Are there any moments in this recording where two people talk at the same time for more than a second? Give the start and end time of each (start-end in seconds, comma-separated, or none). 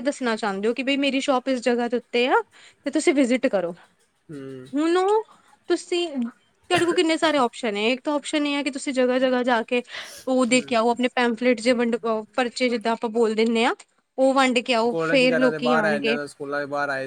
14.9-16.2